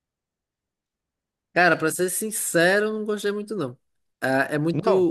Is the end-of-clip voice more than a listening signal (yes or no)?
no